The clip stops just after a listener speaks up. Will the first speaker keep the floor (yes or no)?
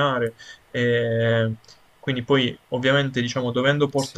yes